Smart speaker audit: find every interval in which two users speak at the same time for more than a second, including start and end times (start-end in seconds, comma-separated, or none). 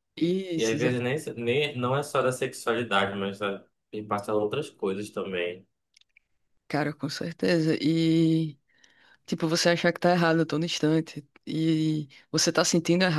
none